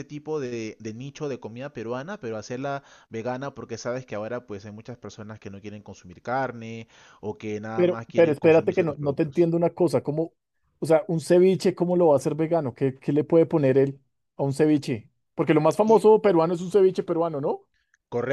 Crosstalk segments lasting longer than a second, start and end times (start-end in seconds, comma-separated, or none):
7.7-9.5